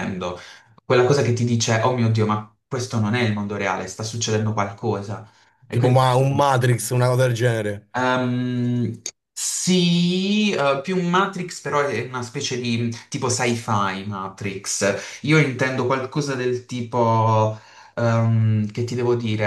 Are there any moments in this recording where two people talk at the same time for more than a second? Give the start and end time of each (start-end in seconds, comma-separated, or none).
none